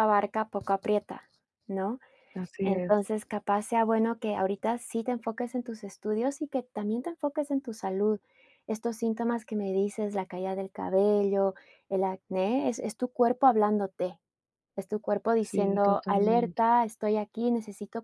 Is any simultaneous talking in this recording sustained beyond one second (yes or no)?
yes